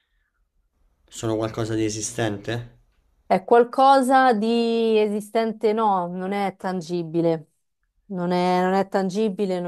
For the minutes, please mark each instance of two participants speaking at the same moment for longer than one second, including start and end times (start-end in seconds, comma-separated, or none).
none